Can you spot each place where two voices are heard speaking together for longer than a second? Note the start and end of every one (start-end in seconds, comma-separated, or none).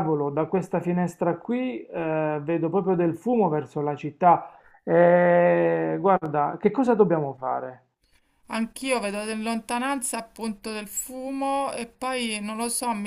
none